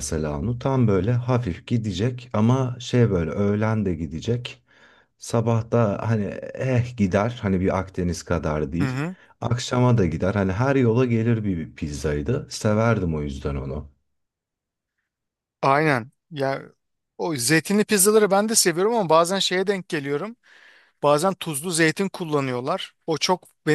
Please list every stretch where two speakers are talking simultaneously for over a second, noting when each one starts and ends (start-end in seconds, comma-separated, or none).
none